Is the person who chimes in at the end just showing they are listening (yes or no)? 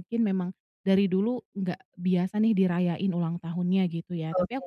yes